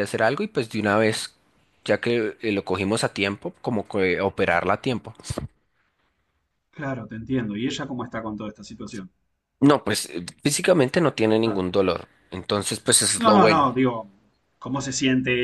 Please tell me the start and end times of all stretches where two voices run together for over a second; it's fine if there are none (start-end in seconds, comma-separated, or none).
none